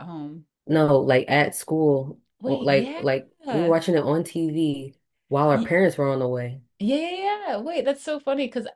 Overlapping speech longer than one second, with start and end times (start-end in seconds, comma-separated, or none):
2.4-3.8